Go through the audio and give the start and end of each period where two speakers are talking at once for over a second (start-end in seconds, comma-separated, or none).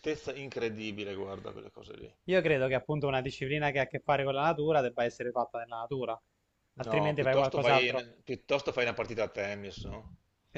6.8-8.1